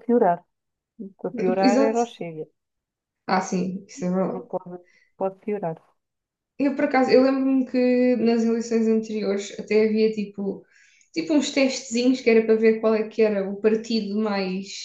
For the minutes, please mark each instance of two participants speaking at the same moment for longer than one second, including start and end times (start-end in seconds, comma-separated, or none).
none